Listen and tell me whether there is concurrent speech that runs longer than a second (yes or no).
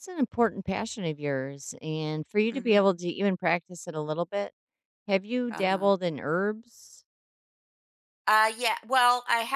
no